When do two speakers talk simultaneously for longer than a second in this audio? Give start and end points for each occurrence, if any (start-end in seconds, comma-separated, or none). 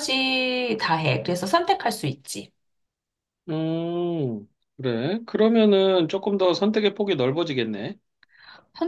none